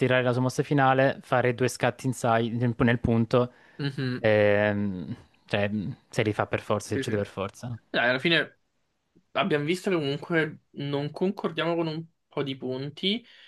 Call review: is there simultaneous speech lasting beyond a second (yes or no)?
no